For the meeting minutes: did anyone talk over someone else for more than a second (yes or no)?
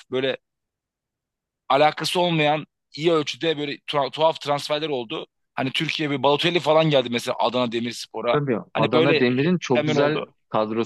yes